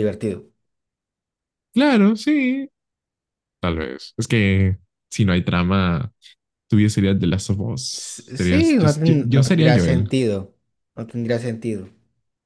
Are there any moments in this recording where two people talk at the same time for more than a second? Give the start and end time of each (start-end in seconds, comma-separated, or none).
7.9-10.1